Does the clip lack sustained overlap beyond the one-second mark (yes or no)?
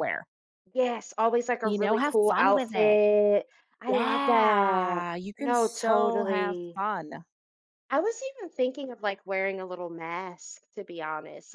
no